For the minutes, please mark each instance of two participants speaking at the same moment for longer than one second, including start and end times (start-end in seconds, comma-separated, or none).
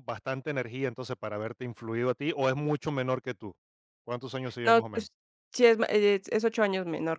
none